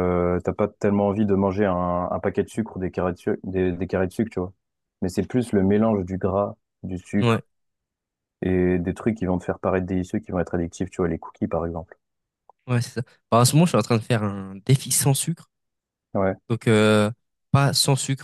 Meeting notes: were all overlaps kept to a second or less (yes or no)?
yes